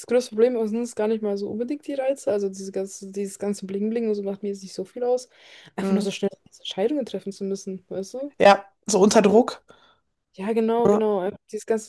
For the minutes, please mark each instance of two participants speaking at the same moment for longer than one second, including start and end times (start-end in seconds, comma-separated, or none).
none